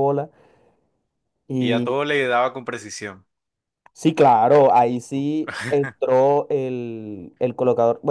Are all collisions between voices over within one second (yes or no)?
yes